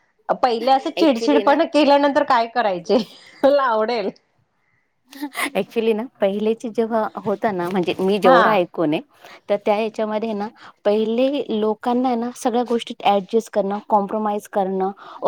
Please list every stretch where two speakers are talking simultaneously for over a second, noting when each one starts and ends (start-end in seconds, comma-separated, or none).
none